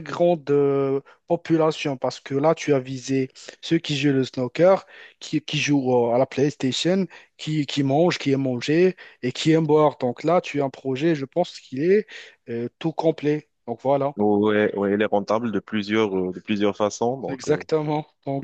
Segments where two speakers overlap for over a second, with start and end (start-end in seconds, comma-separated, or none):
none